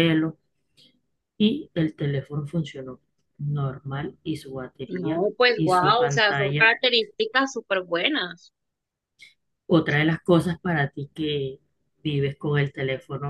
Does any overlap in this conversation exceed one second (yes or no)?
yes